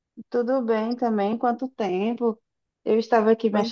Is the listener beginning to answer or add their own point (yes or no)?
no